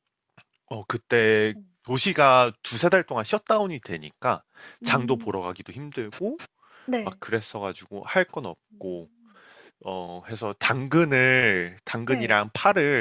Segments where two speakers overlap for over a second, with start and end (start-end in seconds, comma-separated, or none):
none